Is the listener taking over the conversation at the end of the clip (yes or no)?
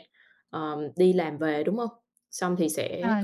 no